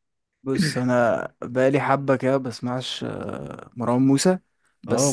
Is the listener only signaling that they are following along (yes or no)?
no